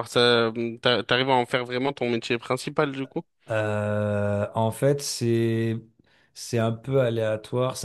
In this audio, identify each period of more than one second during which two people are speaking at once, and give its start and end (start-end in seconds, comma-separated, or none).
none